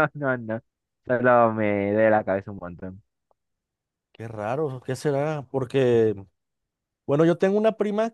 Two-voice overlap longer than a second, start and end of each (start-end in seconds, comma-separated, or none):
none